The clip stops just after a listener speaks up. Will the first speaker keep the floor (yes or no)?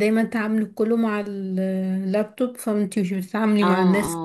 no